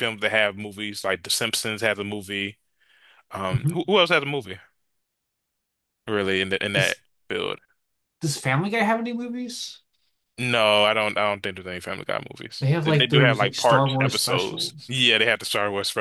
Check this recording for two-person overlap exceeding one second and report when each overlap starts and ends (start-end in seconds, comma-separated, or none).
12.6-14.9